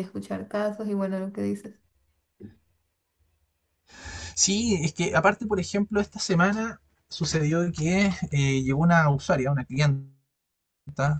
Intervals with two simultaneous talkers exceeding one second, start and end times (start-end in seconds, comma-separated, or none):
none